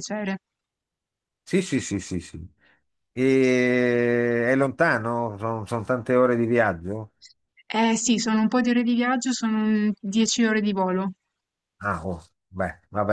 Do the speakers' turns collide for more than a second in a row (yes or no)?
no